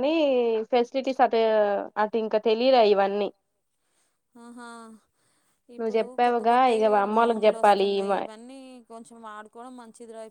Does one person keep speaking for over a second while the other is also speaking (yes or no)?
yes